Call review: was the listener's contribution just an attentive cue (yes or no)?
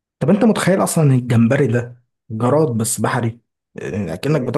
yes